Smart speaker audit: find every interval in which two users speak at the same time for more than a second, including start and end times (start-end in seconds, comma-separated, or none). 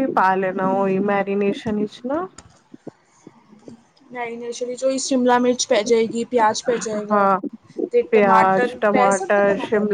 none